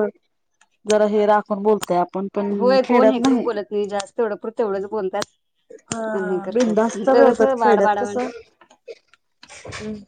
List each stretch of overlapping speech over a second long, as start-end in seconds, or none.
6.2-8.2